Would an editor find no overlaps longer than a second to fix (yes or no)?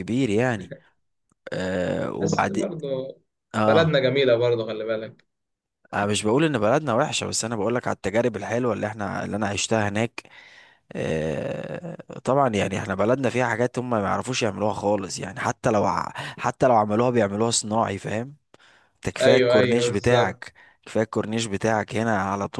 no